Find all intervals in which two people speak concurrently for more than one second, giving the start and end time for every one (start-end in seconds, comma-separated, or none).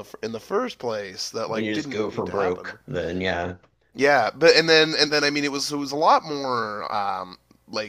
1.5-2.8